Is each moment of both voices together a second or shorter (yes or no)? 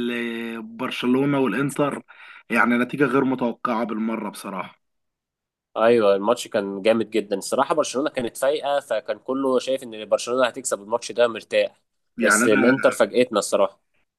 yes